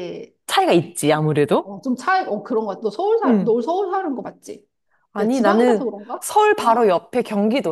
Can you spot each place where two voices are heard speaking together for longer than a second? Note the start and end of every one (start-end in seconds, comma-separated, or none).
5.2-6.9